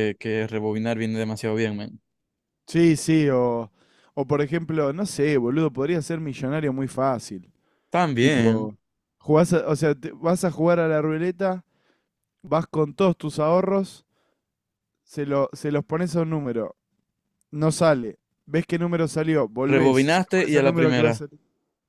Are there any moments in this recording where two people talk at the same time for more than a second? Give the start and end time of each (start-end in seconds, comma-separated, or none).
19.6-21.2